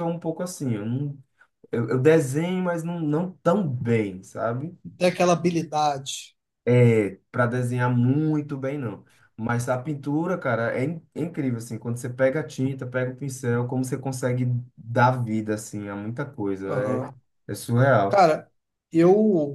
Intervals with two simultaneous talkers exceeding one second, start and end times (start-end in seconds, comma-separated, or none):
none